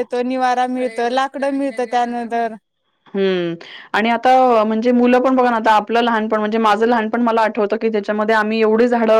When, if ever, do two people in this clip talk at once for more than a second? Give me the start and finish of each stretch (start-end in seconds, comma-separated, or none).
none